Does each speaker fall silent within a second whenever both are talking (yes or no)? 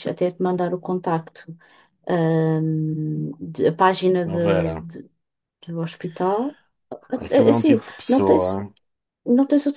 no